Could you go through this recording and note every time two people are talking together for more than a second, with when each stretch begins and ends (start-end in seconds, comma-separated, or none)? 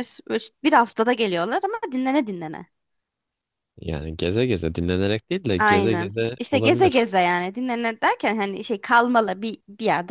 5.6-7.1